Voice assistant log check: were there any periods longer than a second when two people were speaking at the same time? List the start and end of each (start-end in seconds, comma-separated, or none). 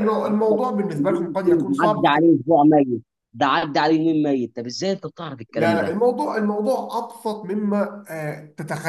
0.9-2.2